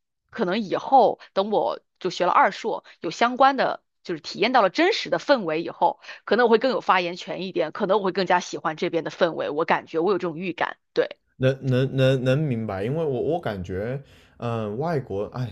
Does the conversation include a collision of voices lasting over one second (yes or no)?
no